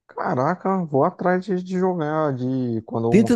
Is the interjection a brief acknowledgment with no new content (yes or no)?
no